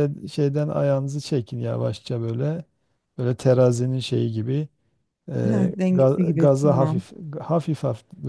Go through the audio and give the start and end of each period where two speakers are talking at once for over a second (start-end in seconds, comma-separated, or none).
5.5-7.0